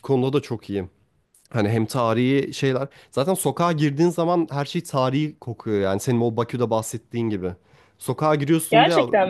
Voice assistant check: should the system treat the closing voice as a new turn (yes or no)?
no